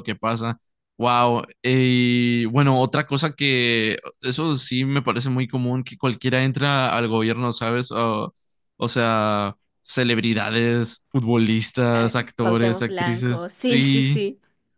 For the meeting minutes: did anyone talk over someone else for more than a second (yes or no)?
yes